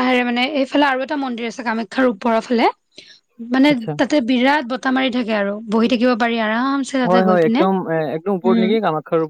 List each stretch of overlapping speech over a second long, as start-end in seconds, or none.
none